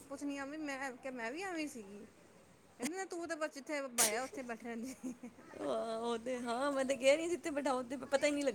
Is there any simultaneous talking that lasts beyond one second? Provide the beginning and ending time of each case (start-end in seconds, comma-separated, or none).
none